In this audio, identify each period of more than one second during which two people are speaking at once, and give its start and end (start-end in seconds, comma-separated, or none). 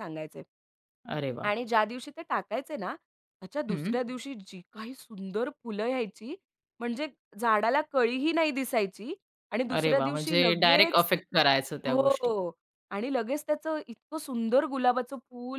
9.8-11.2